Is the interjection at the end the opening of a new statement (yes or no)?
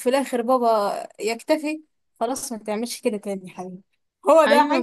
yes